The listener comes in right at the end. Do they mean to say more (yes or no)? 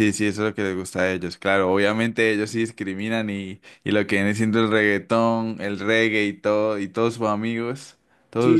yes